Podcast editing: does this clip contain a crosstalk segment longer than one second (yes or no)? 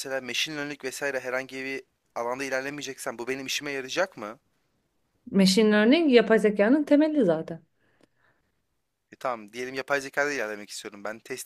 no